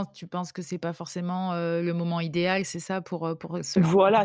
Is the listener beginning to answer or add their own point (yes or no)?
yes